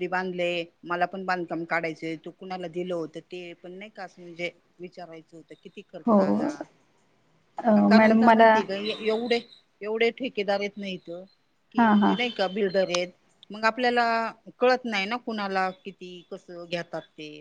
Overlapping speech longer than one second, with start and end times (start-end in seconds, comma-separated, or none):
none